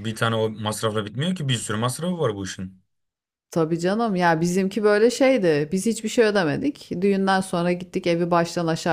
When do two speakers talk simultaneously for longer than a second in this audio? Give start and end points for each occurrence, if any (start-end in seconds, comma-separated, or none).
none